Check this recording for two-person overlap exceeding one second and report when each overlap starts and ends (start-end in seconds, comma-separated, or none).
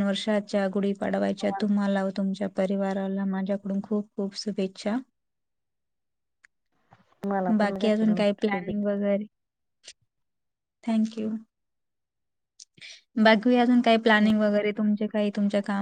7.6-8.9